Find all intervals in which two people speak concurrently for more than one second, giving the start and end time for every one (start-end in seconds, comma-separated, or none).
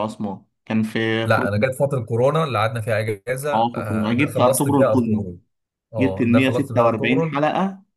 3.5-5.2, 6.0-7.3